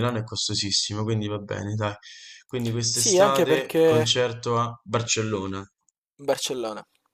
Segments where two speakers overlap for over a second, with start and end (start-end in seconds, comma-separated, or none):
2.9-4.2